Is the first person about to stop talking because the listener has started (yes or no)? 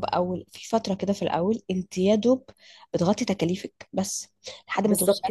no